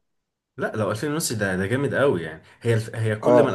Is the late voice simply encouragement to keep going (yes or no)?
yes